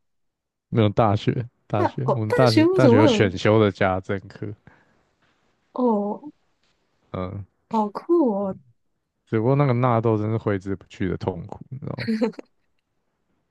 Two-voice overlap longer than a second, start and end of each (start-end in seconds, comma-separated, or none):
1.7-3.3